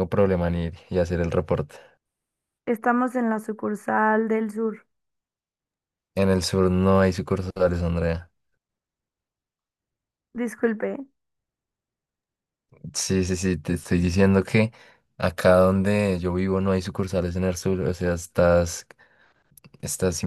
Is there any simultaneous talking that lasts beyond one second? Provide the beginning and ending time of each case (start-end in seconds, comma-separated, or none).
none